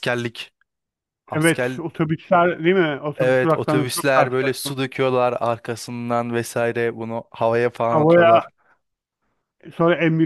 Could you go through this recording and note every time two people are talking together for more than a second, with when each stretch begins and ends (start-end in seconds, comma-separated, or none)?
3.2-4.8